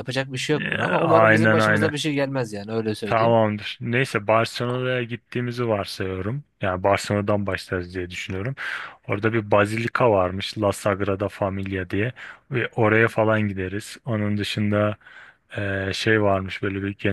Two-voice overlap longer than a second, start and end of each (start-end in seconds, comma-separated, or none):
0.6-1.9